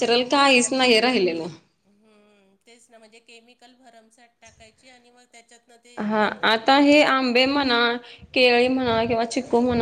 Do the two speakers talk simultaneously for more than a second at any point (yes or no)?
yes